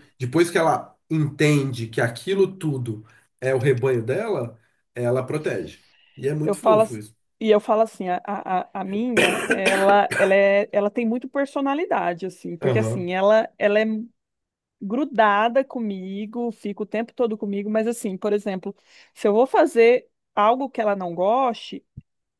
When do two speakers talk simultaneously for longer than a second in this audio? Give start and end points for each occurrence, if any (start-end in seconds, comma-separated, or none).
none